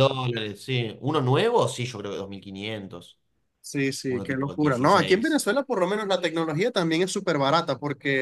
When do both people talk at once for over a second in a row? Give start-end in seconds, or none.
4.1-5.4